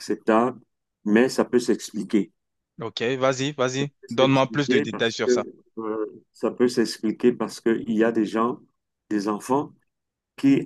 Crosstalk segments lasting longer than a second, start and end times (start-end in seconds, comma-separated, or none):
4.0-5.5